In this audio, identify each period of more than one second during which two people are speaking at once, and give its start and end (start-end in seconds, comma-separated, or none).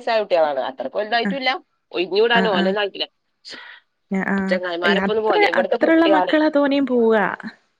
4.5-6.3